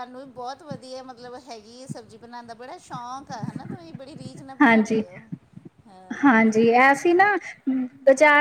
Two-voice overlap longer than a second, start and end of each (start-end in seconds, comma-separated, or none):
none